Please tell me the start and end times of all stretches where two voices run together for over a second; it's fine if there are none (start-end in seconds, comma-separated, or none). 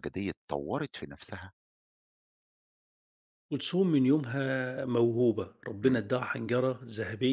none